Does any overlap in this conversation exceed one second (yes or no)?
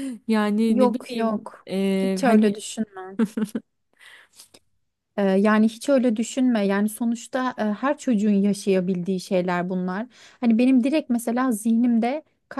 yes